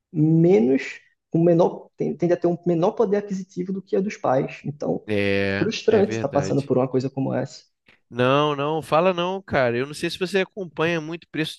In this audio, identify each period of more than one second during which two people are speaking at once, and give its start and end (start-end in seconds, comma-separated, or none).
5.4-6.7